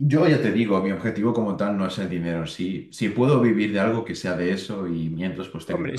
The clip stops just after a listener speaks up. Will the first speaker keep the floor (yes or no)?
no